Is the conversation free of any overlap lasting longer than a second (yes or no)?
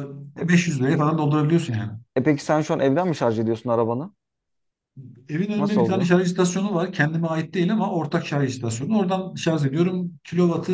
yes